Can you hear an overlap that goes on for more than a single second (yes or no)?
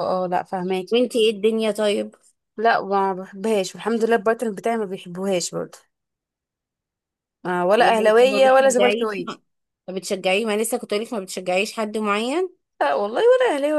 yes